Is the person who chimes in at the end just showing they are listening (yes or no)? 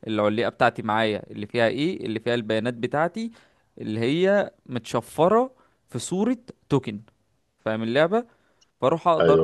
yes